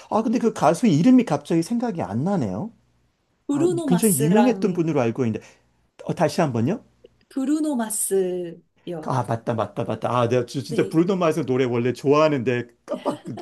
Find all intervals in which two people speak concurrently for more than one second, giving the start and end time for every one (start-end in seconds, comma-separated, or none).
3.5-4.9